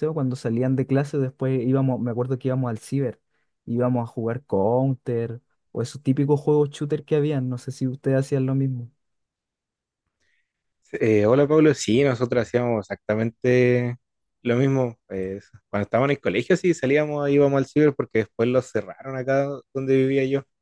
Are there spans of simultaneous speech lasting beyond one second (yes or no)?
no